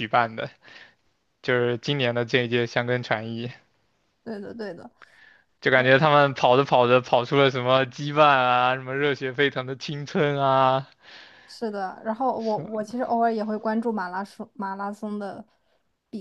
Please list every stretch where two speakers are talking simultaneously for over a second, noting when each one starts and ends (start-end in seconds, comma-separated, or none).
none